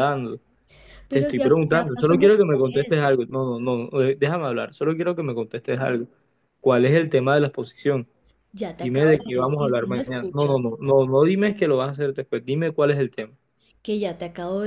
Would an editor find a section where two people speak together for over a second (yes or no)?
yes